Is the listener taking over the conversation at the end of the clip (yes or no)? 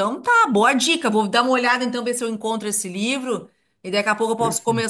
no